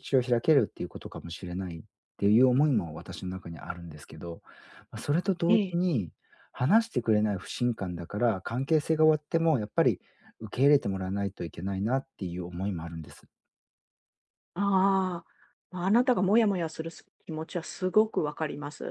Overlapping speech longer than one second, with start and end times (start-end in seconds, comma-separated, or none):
none